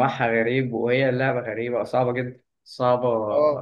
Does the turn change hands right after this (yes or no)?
no